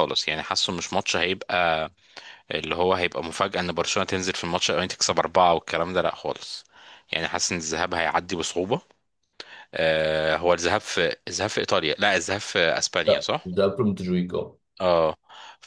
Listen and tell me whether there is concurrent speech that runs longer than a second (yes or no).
no